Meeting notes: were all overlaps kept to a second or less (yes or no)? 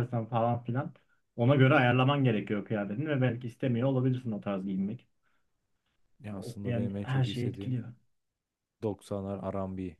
no